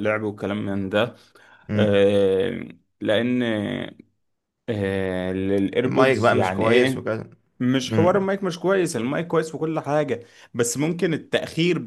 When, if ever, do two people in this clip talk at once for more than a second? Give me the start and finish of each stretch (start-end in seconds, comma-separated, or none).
5.8-7.1